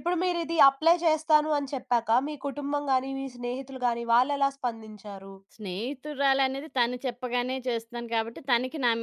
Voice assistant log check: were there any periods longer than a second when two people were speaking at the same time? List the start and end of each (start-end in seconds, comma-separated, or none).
none